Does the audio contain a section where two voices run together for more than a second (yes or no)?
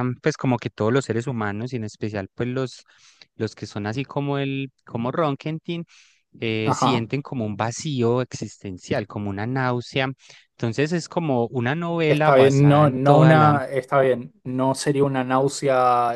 yes